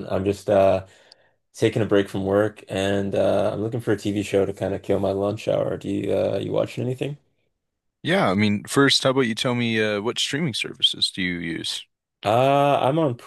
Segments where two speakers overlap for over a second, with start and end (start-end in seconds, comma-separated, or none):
none